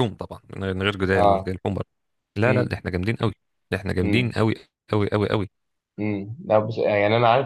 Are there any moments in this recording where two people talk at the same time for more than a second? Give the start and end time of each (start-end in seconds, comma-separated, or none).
none